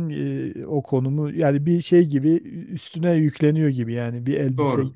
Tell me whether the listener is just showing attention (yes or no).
yes